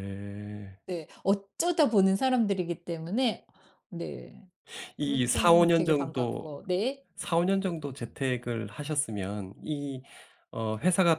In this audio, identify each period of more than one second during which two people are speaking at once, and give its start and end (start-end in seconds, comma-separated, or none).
5.0-6.5